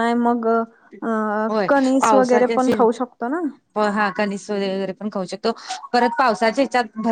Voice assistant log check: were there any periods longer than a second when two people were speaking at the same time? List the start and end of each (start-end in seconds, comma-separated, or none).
none